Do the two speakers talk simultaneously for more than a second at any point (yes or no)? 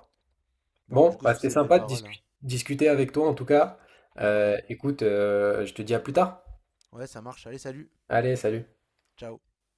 yes